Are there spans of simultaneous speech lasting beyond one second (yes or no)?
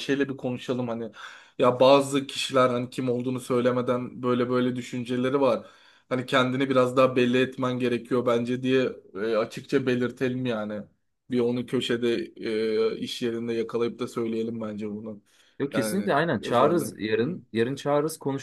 yes